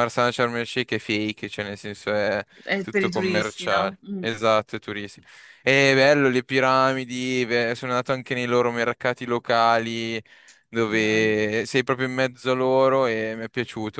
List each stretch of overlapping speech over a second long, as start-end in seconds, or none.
2.8-4.2